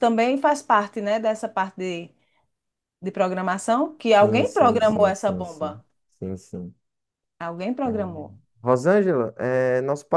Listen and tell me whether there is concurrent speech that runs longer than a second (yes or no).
yes